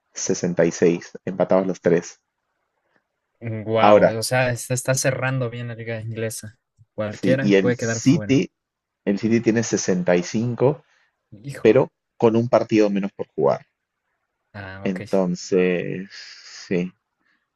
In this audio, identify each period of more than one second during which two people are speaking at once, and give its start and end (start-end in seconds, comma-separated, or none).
7.1-8.4